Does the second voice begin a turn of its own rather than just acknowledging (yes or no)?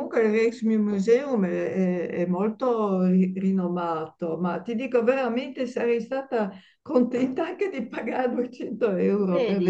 no